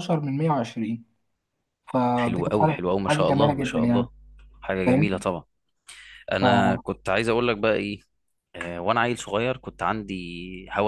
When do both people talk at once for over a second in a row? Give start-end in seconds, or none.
2.1-4.1